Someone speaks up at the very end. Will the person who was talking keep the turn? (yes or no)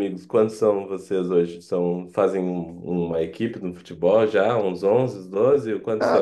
no